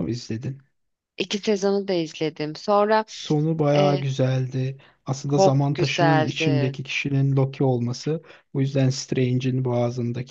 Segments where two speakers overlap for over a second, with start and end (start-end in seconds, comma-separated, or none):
5.3-6.8